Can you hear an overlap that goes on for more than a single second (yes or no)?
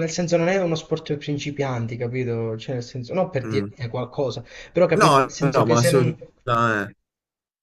yes